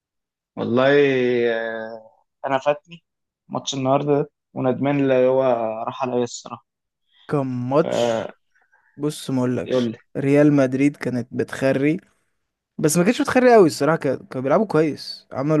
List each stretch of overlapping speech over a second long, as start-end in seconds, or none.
none